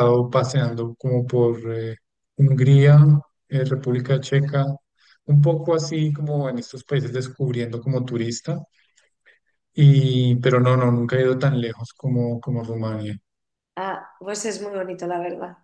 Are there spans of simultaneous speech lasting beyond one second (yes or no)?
no